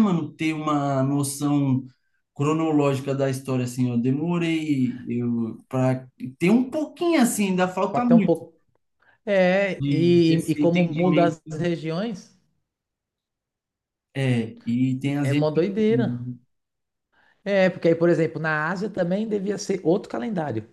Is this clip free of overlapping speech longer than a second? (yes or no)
no